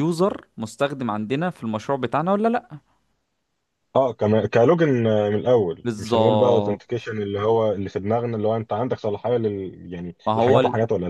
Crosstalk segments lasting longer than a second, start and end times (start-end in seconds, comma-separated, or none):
5.8-7.0